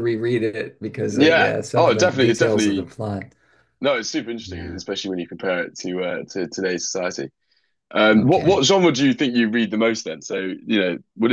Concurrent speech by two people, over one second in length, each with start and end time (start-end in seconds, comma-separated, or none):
1.1-2.9